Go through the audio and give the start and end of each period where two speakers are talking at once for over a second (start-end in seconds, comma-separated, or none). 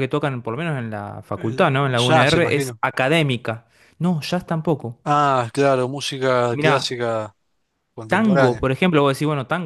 1.3-2.8